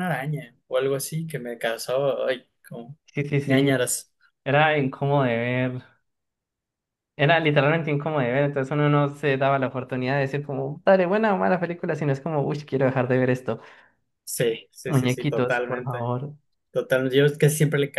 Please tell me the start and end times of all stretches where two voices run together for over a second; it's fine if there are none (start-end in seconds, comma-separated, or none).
14.9-16.1